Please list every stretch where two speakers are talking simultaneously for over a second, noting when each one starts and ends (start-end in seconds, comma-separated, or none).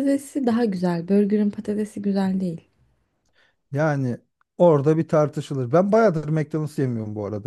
none